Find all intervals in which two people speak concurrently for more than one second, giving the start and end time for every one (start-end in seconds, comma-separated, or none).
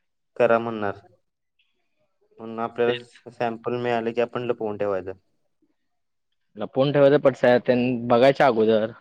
none